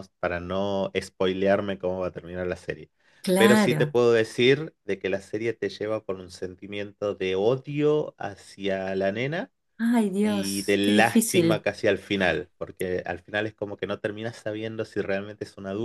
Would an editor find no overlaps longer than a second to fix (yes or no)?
no